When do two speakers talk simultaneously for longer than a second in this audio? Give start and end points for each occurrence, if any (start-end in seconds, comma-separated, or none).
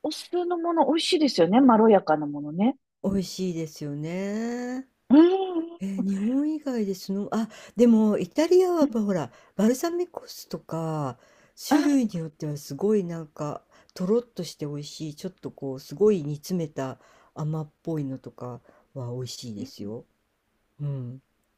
none